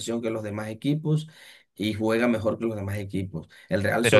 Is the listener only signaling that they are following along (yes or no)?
no